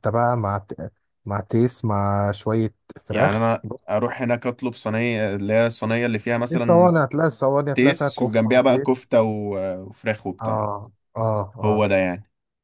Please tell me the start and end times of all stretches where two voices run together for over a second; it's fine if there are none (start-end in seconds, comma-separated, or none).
7.7-9.0